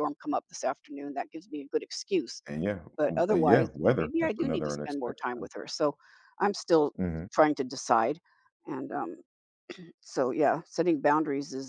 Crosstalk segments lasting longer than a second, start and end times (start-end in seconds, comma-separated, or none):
3.0-5.5